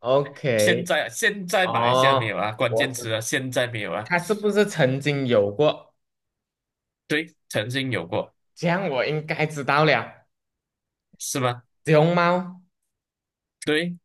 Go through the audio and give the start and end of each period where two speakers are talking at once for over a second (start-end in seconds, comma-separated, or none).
1.6-3.1